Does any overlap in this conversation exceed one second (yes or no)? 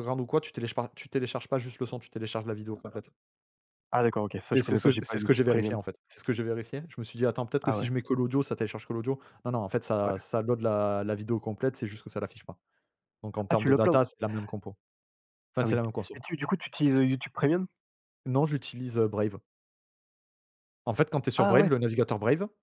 yes